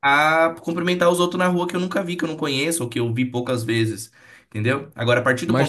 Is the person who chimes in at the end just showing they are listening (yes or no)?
yes